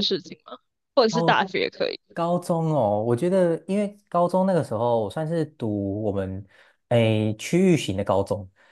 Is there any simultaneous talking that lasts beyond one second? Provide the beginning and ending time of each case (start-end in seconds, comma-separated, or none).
none